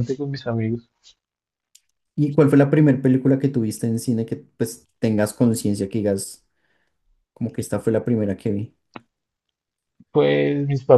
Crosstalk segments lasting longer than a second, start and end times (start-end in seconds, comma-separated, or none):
none